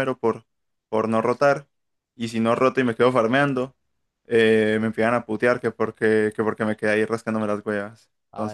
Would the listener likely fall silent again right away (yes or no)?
no